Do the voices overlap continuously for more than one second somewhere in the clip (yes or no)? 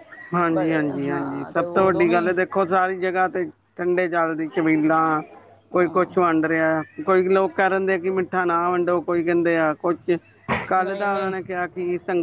yes